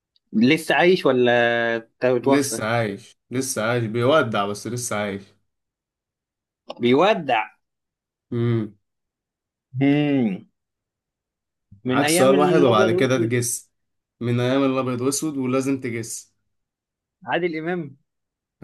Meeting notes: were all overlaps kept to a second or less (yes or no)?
no